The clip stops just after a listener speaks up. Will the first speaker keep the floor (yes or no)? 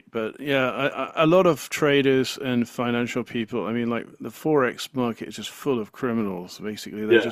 yes